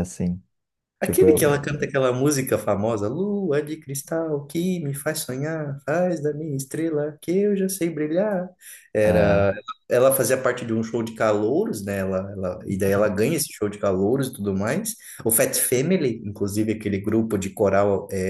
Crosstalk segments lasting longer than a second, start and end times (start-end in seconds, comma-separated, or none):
none